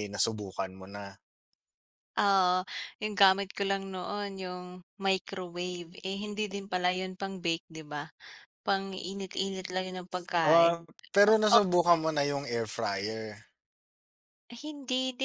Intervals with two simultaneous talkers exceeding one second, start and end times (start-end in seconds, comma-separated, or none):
none